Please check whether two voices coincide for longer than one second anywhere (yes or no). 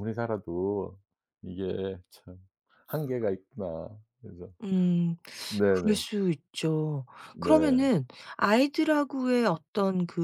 no